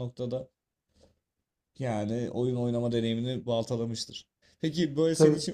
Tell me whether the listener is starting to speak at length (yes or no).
no